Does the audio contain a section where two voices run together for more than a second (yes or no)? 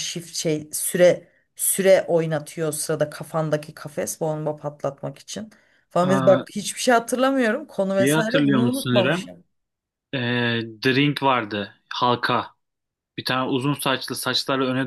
yes